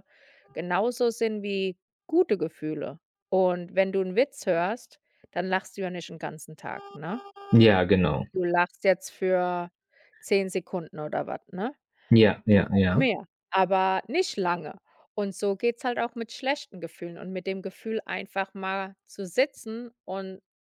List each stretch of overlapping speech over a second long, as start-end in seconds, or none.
none